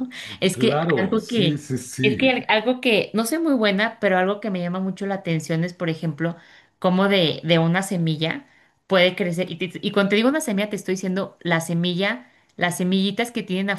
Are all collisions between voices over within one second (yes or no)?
no